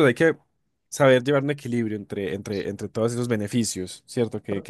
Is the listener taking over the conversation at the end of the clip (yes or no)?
yes